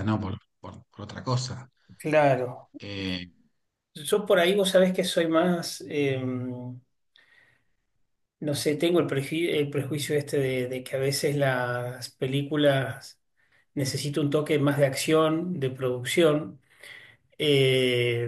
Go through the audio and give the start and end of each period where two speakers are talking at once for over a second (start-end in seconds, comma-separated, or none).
none